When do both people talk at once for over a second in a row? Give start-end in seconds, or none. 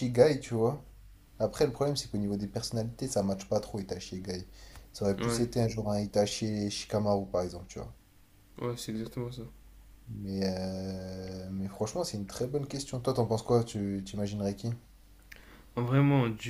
none